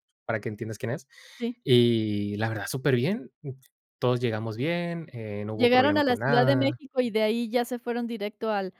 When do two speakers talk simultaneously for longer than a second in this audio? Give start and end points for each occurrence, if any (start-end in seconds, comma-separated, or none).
5.5-6.8